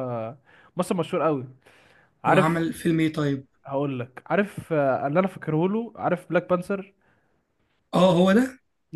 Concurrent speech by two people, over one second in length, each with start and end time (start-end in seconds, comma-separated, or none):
none